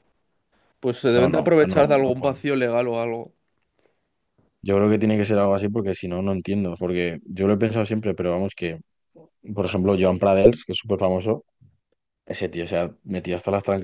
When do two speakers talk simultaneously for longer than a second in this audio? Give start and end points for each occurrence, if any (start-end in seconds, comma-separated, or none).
1.1-2.4